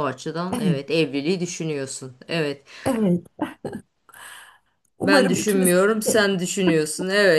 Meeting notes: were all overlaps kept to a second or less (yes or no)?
no